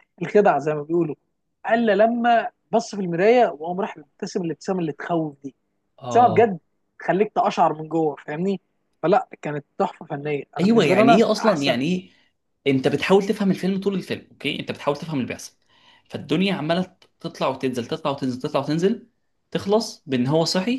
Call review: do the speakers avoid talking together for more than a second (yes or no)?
no